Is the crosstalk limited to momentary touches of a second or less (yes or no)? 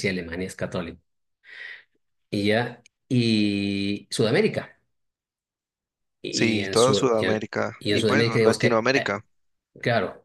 no